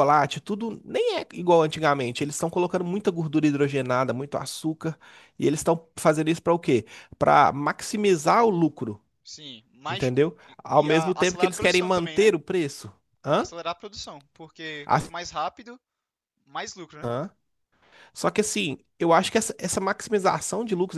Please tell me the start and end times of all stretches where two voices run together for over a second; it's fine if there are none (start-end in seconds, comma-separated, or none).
9.9-12.3